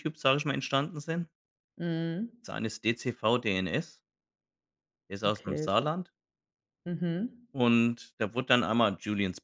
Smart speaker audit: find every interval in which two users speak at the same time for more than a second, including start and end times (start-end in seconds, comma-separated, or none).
none